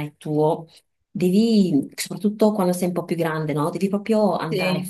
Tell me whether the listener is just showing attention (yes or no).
yes